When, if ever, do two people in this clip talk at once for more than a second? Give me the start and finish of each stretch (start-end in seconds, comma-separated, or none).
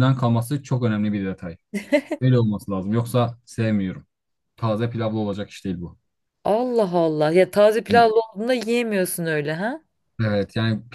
none